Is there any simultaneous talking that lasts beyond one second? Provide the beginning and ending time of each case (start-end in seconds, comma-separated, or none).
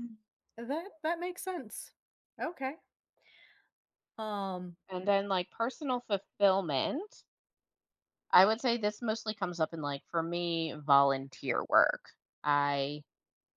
none